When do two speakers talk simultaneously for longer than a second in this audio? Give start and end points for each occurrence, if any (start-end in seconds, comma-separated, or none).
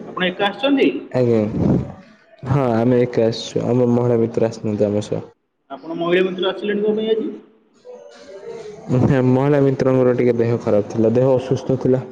none